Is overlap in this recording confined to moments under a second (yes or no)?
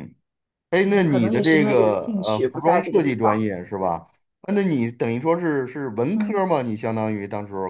no